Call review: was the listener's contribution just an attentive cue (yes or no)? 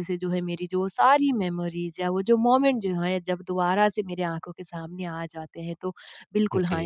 yes